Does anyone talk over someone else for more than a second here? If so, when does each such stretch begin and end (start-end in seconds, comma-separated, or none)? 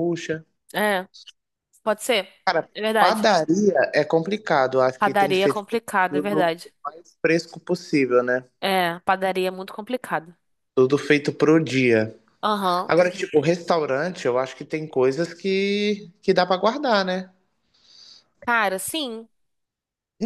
5.0-6.7